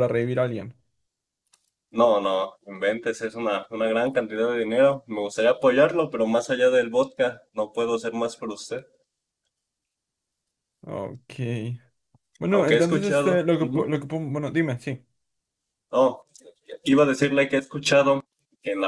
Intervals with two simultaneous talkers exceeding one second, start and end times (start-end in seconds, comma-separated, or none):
12.5-13.9